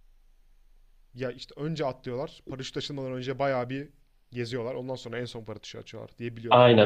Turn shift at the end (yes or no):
yes